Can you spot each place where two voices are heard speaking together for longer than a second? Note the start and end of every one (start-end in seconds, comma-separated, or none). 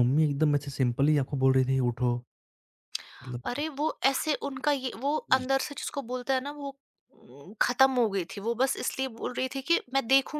none